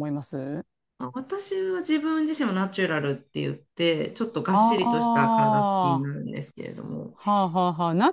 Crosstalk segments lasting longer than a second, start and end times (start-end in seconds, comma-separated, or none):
4.5-6.1